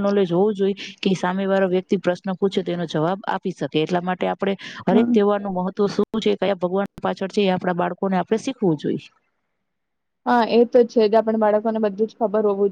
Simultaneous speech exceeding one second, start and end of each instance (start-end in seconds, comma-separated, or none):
none